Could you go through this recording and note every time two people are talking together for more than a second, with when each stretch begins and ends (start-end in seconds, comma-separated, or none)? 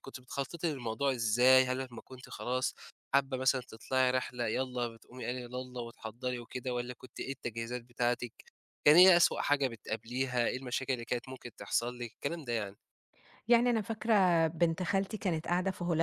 none